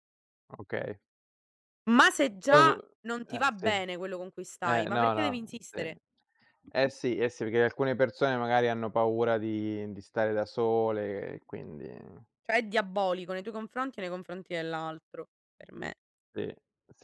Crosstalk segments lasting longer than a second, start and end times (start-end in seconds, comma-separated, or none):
4.7-5.9